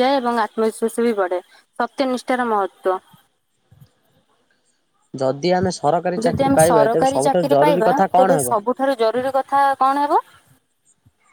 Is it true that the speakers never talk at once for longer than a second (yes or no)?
no